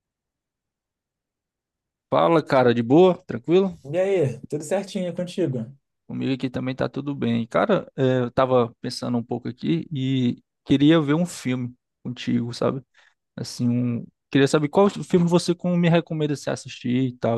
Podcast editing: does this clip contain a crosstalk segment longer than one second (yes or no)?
no